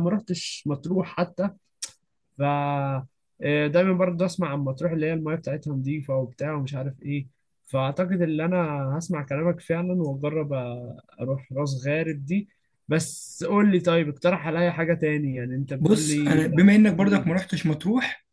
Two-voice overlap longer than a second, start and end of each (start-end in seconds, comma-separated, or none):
15.8-17.4